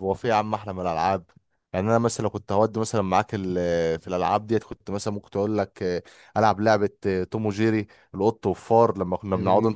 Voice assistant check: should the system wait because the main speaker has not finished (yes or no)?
yes